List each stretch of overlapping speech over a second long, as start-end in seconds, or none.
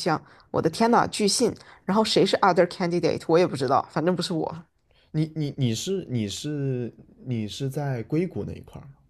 none